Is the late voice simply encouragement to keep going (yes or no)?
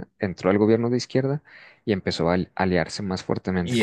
no